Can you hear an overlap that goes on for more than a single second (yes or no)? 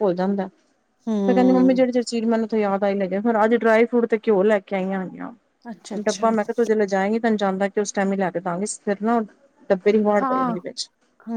no